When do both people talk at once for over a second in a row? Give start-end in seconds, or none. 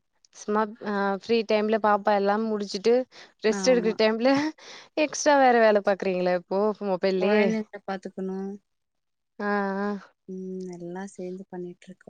none